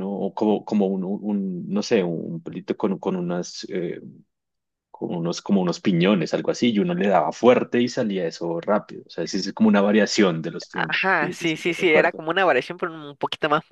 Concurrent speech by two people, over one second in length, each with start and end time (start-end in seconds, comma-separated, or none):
10.7-12.2